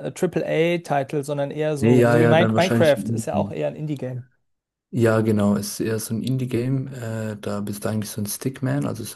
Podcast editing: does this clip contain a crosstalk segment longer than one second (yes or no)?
yes